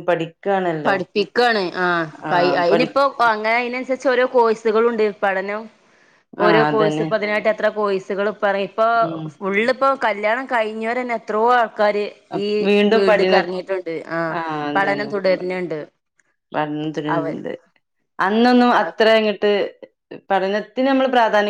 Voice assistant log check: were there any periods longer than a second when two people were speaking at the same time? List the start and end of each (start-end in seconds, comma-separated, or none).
none